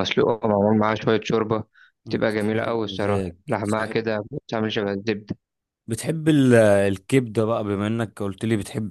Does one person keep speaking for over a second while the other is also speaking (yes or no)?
yes